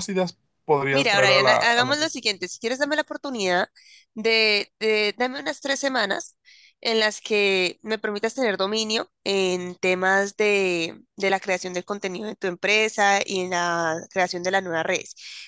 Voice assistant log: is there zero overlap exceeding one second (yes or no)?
no